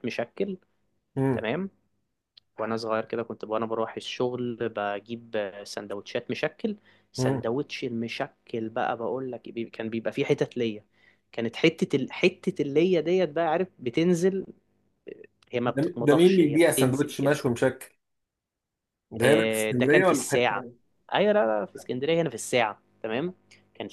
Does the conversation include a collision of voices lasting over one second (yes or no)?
yes